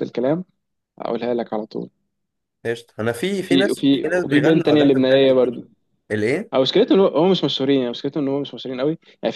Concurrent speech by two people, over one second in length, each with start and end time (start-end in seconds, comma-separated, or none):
3.4-5.6